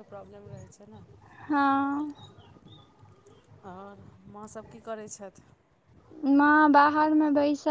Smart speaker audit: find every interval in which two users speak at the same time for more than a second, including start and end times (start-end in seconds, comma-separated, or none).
none